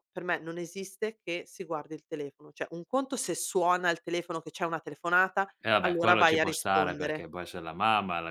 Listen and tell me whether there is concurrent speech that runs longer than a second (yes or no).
yes